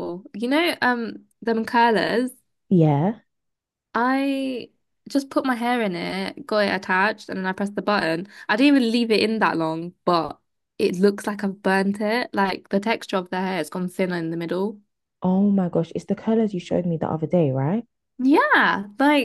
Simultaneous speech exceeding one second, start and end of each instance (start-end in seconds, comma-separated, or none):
none